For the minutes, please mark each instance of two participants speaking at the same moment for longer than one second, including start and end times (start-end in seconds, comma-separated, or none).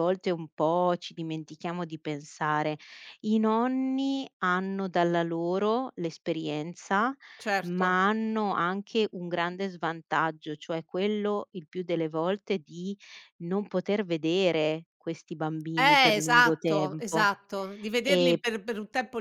15.7-17.3